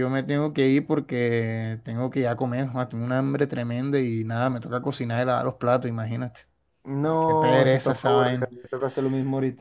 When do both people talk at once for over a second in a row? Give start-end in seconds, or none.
7.0-8.5